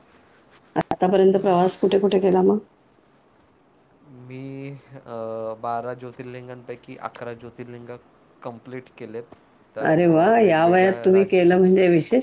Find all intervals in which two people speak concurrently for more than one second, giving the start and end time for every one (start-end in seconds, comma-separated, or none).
9.8-11.4